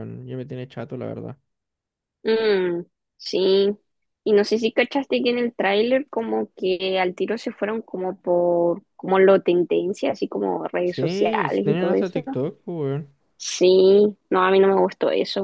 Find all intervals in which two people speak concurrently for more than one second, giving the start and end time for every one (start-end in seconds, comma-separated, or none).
10.8-12.2